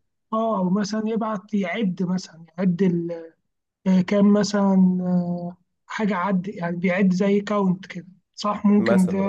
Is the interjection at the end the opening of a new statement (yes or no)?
yes